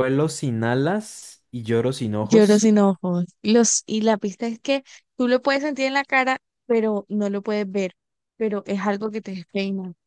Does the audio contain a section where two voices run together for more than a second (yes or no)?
no